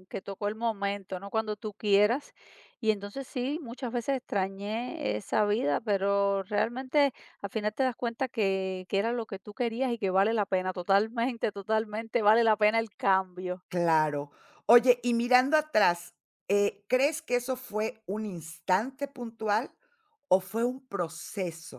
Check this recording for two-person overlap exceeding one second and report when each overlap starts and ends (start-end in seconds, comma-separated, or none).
none